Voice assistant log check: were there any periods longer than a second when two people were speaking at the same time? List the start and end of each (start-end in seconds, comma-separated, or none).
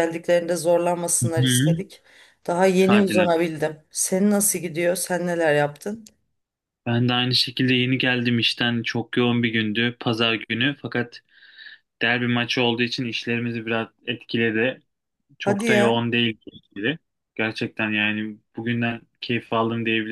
none